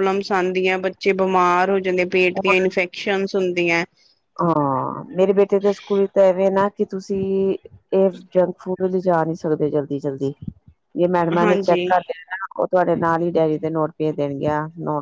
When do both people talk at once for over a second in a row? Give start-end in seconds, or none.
none